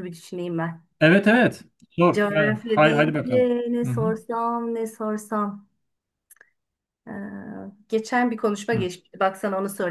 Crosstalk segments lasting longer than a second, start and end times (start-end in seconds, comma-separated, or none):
2.1-4.1